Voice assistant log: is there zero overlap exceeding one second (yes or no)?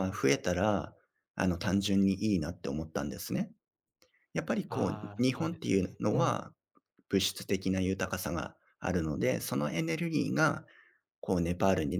no